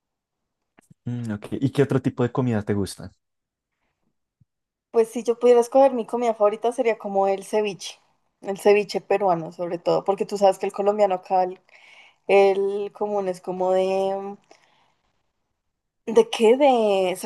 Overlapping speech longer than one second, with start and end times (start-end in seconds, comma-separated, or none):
none